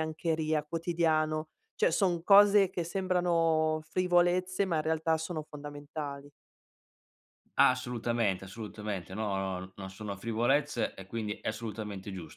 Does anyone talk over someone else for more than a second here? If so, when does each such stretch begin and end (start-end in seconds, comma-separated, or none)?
none